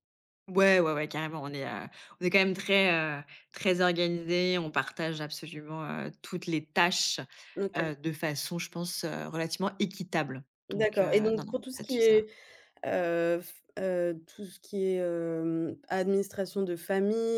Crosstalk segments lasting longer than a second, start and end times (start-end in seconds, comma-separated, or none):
10.7-12.2